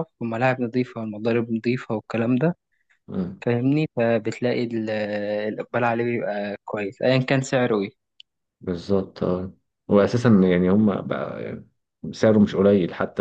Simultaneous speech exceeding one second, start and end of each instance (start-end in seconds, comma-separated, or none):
none